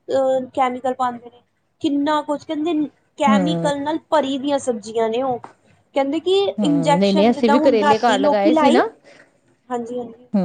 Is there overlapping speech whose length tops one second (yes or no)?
yes